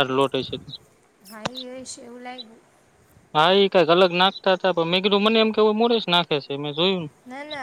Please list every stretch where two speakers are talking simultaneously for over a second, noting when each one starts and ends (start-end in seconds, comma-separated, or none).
none